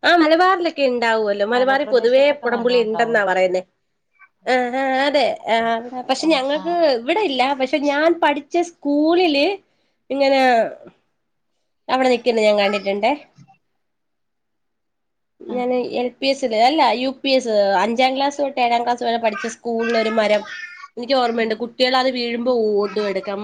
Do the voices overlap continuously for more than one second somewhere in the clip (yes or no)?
yes